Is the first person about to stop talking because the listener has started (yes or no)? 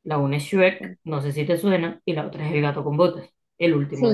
yes